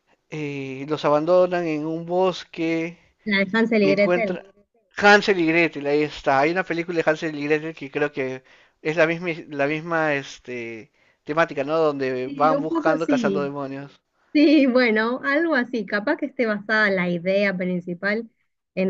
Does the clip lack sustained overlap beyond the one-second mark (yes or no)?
no